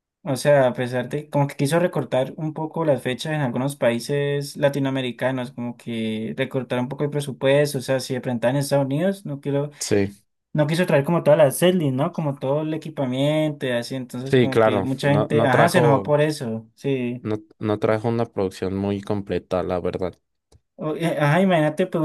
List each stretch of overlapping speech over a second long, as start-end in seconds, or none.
14.3-16.1